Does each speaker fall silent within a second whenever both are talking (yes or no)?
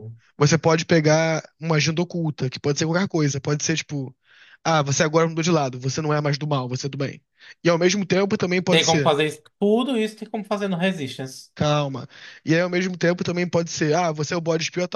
yes